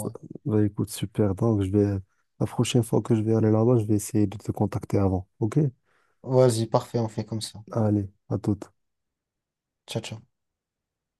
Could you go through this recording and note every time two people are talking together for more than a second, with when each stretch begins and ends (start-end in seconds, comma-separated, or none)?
none